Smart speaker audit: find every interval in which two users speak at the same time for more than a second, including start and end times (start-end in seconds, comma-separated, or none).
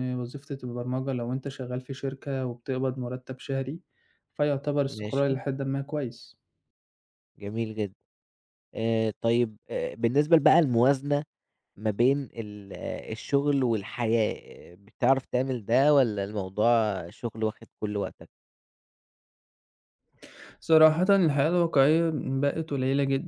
none